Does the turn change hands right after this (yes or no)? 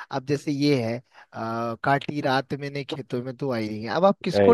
no